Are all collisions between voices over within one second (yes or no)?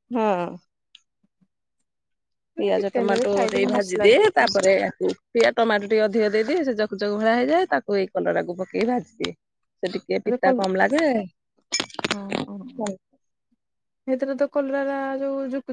no